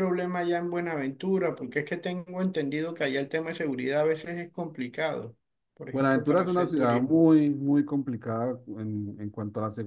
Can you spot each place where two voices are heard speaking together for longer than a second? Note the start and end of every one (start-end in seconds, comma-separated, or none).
5.9-7.2